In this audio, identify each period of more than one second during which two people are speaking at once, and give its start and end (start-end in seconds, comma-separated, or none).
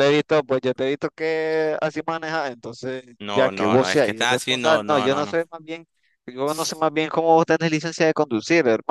3.2-5.4